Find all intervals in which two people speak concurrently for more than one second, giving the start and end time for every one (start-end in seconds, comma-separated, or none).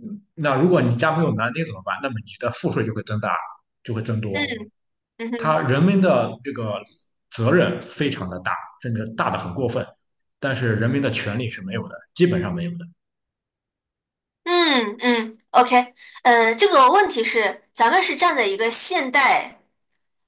none